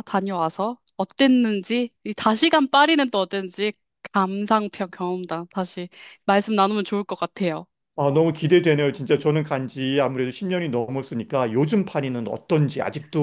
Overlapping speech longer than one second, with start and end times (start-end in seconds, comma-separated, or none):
none